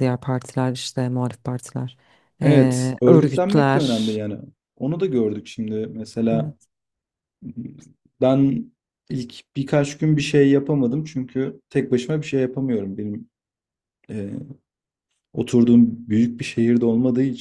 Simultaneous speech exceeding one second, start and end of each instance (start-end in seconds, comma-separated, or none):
2.4-4.2